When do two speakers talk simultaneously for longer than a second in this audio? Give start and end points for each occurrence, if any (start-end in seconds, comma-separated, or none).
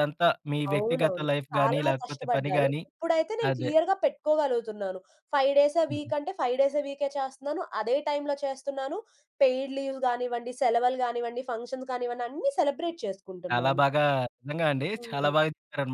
0.7-2.8